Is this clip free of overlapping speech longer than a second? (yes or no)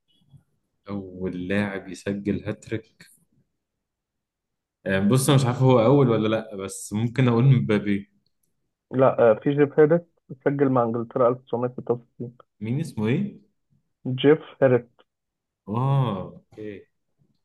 yes